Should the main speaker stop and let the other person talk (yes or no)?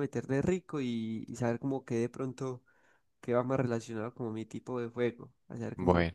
yes